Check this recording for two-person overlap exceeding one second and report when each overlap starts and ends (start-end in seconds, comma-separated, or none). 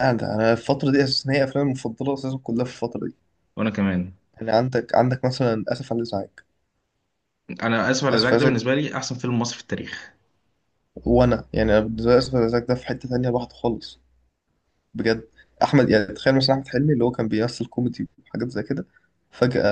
none